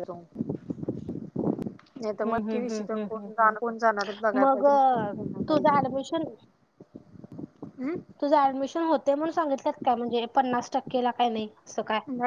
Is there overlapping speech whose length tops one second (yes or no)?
yes